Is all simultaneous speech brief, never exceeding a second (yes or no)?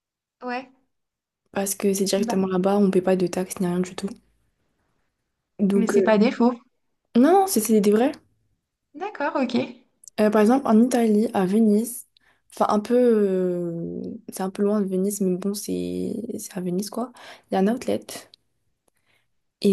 yes